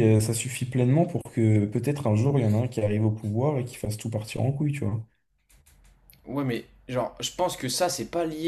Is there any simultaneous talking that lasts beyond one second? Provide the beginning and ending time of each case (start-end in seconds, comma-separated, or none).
none